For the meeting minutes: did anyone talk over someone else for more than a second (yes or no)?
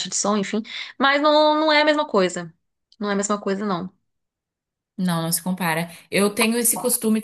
no